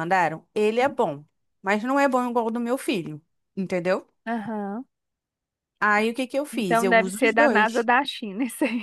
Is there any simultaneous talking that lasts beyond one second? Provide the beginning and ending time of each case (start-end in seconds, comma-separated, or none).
6.5-7.9